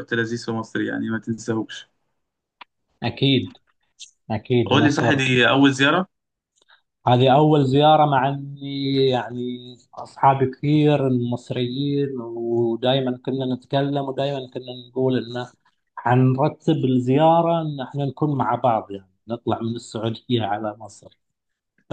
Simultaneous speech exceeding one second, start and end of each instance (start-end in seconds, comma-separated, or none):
none